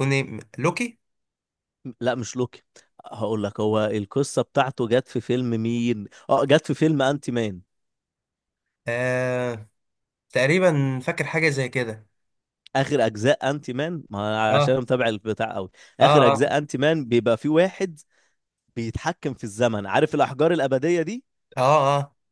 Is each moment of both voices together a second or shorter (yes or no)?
yes